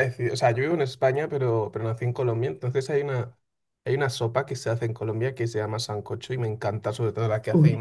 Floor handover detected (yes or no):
no